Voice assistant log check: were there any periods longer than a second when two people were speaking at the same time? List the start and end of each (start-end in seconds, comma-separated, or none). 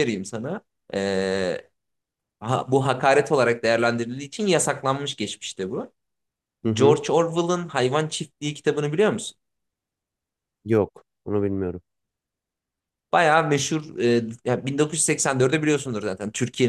none